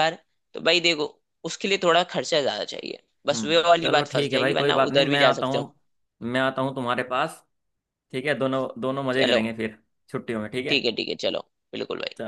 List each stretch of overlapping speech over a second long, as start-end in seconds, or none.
3.3-5.7